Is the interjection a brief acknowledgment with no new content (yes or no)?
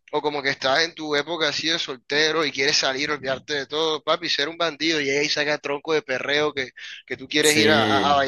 yes